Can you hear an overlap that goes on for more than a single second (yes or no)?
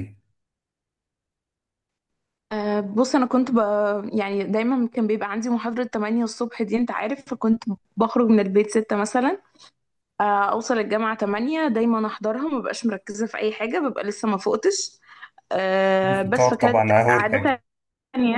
yes